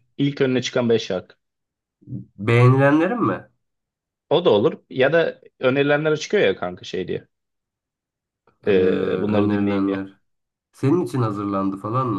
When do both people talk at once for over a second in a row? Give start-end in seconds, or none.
8.7-10.1